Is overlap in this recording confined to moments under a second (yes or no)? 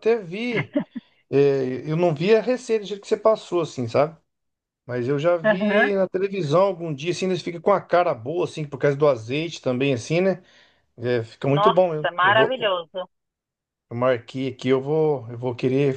no